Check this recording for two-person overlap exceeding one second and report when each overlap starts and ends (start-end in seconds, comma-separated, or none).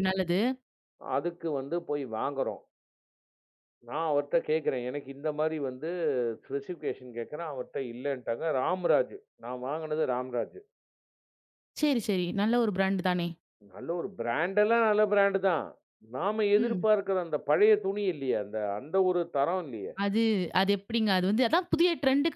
none